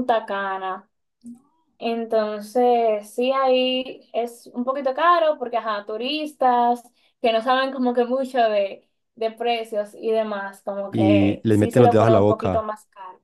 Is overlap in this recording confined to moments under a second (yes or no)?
no